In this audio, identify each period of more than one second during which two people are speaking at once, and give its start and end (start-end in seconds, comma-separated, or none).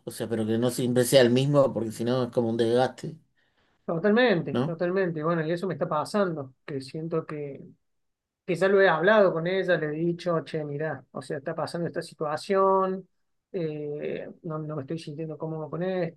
none